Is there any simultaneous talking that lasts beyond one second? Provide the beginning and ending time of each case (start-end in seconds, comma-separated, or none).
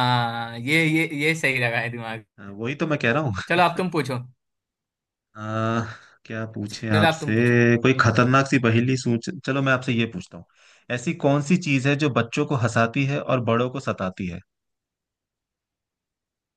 none